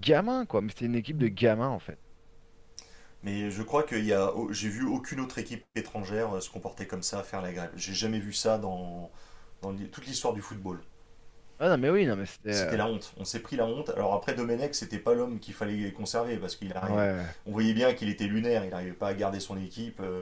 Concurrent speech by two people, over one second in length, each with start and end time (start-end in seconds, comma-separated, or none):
none